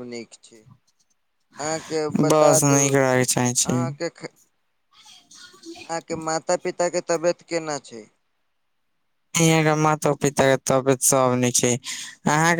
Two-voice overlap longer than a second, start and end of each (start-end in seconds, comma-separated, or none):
2.3-3.8